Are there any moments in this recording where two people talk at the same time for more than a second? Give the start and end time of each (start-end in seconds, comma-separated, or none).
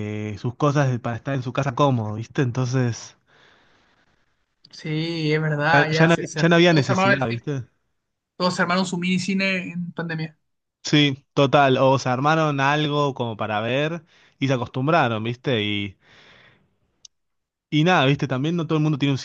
5.7-7.5